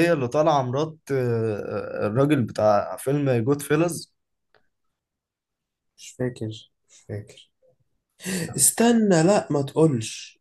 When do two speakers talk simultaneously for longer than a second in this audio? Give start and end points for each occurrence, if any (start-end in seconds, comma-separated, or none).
none